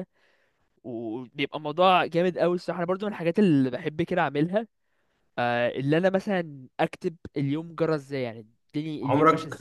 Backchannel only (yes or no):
no